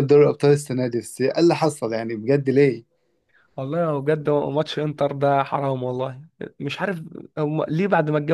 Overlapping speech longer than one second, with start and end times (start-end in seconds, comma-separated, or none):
none